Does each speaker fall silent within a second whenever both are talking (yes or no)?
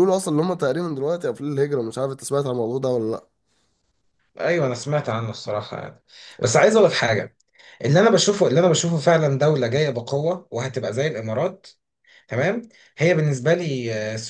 yes